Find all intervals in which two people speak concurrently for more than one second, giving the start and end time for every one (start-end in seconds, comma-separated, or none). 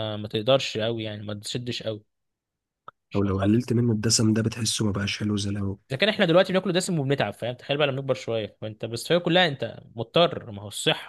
none